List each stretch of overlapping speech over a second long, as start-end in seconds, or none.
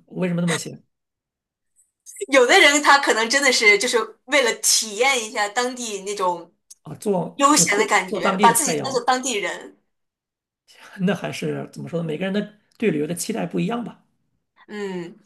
7.3-9.0